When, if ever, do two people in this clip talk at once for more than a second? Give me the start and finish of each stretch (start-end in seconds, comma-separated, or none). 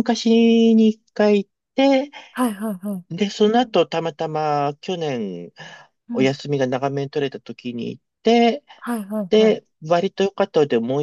none